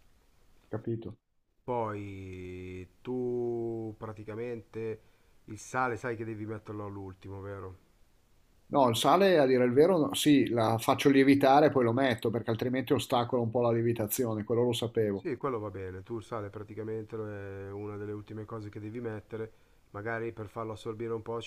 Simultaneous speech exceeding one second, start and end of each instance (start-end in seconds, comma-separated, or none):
none